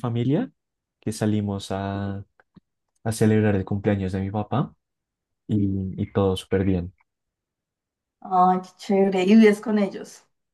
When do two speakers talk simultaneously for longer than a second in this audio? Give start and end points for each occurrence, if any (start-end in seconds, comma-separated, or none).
none